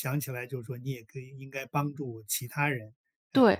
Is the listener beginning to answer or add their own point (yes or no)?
yes